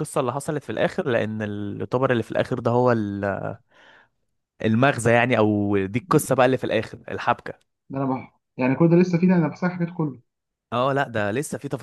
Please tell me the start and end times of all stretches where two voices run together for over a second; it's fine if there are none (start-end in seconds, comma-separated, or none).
none